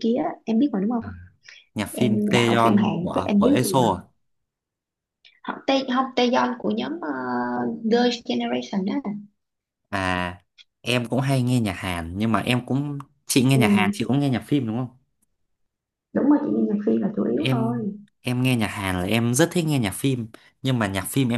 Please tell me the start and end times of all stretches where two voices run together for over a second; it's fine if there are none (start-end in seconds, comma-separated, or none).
1.9-3.8